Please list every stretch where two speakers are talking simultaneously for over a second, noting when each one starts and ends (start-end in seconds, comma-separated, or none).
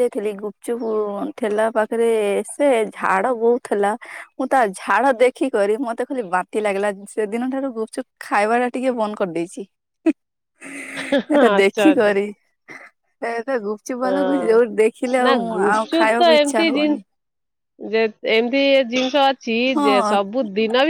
15.2-17.0